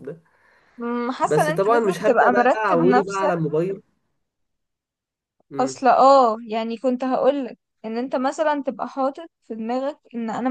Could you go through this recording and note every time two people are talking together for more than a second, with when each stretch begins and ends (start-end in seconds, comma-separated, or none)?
1.2-3.3